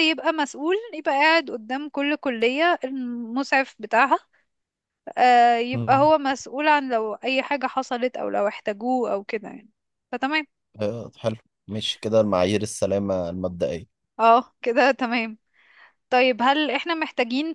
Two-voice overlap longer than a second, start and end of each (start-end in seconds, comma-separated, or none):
none